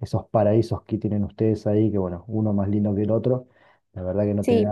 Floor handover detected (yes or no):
no